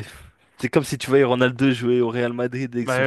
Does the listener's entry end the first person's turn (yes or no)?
yes